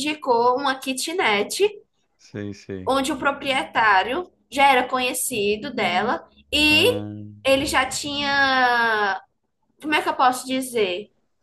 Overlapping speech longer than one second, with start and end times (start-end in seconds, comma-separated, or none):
none